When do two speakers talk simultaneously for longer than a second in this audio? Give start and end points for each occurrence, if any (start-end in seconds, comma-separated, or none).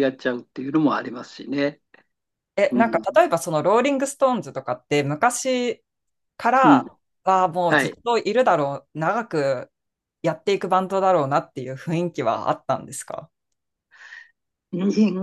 none